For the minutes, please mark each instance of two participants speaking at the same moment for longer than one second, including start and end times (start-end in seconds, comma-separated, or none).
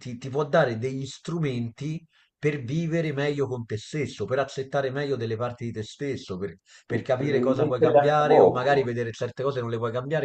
7.2-8.9